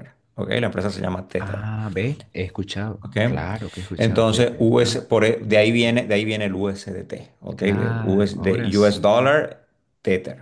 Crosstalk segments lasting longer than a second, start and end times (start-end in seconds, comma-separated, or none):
4.0-6.0, 7.5-9.4